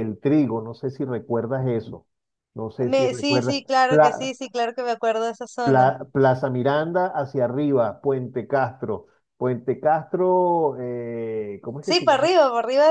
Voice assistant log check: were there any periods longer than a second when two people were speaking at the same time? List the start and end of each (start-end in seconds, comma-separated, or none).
2.9-4.3